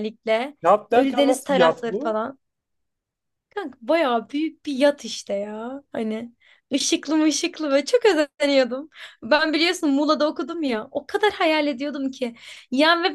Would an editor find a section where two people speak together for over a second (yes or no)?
yes